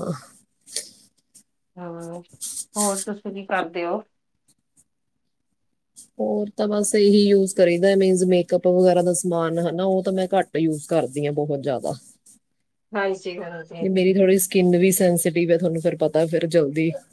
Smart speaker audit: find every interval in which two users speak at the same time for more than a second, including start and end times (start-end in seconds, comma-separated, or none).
none